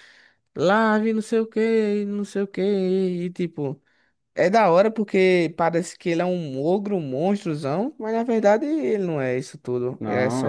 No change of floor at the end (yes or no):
no